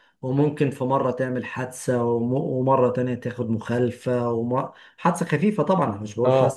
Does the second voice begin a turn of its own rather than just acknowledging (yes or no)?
no